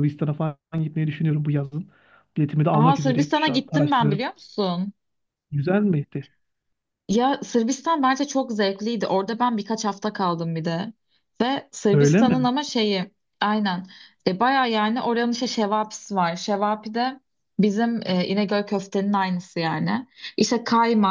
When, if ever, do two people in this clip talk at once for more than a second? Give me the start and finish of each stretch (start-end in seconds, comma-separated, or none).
2.7-4.2